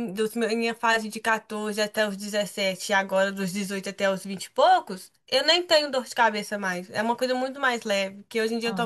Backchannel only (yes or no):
yes